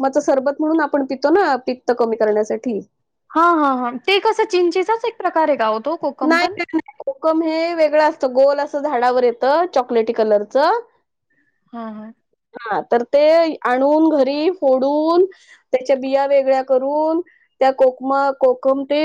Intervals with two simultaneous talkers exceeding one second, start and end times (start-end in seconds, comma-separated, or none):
none